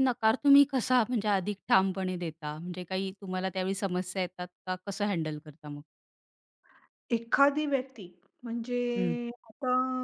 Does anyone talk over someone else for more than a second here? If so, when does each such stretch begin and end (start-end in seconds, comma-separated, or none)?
none